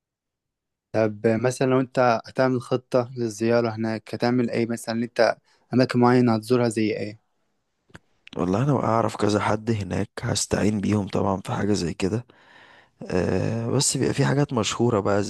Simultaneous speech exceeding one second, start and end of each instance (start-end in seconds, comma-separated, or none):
none